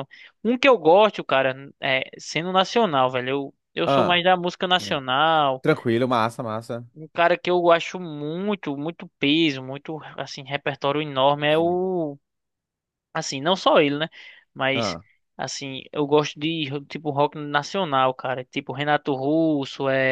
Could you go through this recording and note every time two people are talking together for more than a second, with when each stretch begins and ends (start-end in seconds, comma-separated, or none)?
none